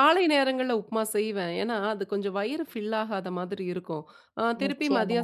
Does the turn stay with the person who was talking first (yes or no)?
yes